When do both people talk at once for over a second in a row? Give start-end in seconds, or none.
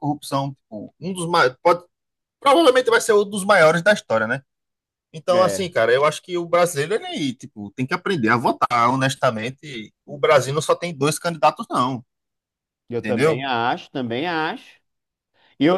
none